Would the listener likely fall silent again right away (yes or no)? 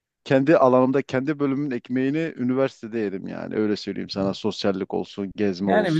no